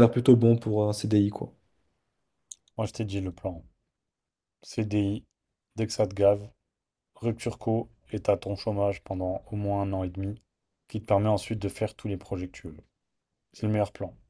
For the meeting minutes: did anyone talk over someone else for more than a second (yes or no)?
no